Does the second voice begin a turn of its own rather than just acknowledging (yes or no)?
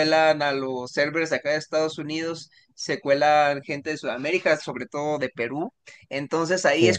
no